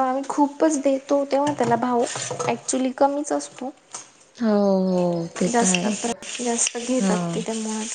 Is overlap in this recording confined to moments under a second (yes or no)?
yes